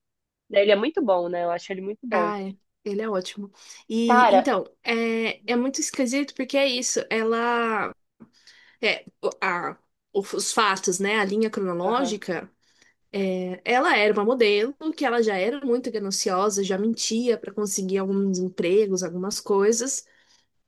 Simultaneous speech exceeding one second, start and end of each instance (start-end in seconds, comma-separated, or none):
none